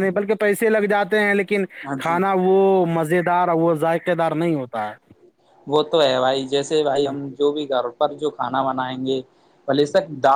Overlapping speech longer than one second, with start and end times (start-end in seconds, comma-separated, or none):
none